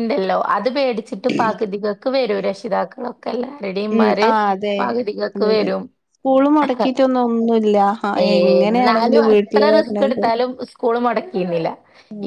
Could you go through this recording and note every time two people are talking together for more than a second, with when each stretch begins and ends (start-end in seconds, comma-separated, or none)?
8.6-10.3